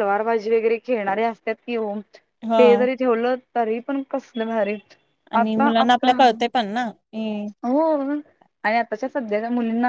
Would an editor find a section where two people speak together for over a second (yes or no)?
no